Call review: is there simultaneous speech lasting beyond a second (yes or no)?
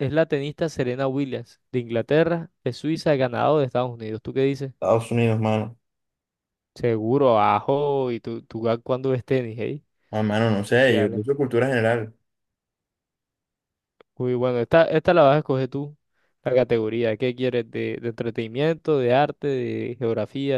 no